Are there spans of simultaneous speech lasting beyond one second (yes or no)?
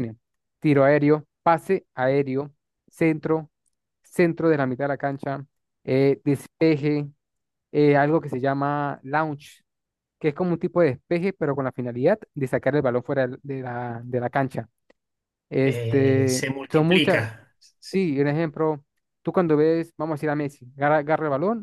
yes